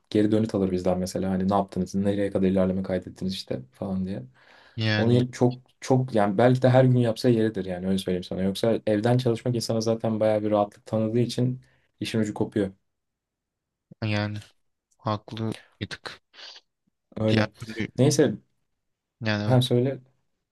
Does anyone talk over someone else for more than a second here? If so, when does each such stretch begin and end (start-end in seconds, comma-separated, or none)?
none